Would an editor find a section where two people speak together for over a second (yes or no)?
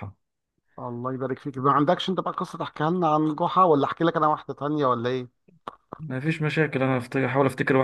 no